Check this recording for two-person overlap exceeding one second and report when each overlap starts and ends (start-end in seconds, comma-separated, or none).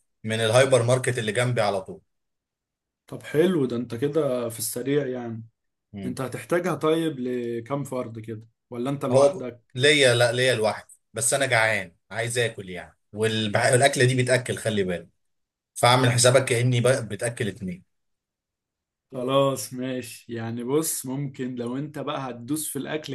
none